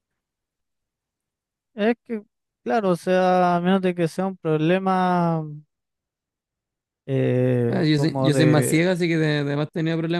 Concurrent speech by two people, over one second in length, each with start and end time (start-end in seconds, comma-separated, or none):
7.7-8.9